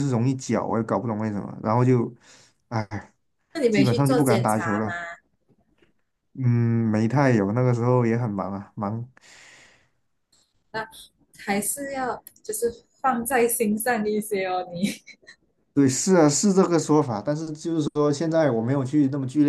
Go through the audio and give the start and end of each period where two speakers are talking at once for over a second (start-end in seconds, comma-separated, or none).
3.7-4.9